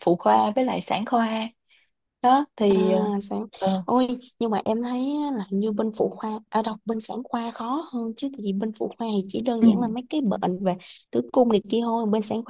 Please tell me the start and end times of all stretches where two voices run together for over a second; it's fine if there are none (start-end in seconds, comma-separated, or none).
none